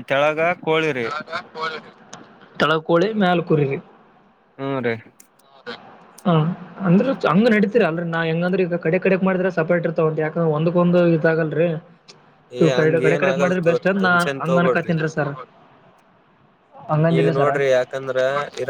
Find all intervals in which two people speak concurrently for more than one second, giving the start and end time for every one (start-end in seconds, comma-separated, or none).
12.8-14.9